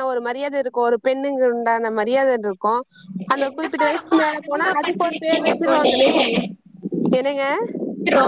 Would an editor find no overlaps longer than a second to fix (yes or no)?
no